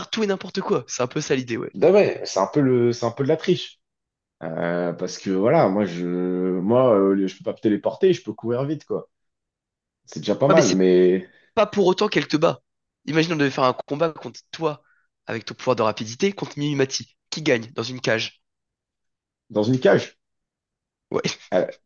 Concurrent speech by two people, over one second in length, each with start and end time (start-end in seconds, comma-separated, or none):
none